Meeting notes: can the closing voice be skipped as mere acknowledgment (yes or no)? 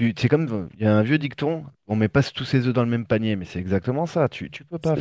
yes